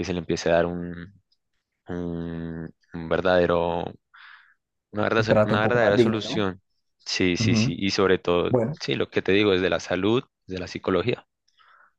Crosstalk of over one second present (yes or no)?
yes